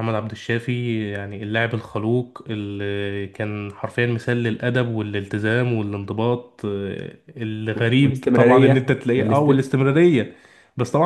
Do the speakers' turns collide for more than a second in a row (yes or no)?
yes